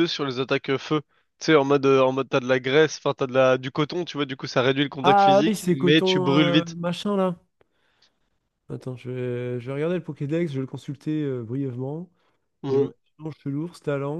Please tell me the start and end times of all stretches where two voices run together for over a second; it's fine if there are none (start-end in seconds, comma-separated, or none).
5.0-6.8